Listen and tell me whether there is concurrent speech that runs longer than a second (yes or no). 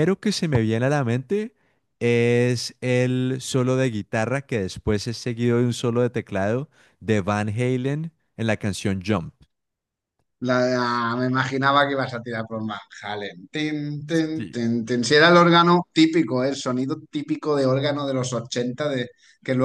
no